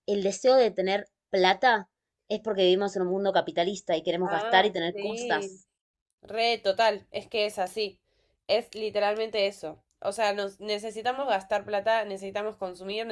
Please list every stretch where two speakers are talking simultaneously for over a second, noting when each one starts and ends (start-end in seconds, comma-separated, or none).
4.2-5.6